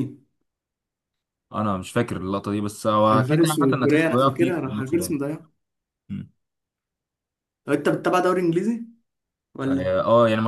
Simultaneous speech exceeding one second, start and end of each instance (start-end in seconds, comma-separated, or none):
3.1-5.2